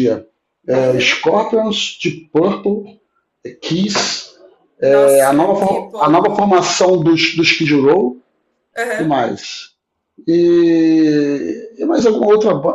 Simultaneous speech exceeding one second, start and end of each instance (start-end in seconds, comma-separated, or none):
4.8-6.4